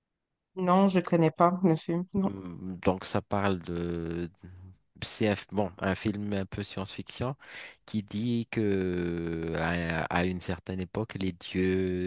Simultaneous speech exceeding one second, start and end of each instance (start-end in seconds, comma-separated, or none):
none